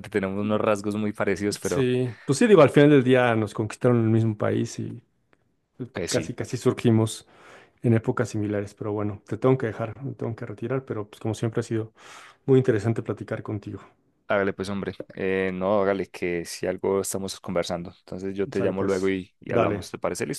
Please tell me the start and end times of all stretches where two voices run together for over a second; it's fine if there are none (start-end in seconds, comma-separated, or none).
18.5-19.9